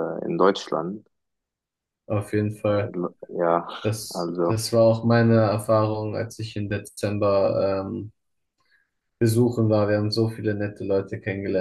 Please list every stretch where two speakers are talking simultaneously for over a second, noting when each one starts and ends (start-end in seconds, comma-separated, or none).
none